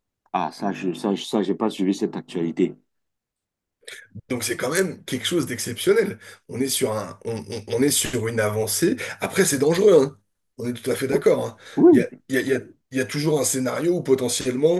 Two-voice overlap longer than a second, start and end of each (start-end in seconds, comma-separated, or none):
none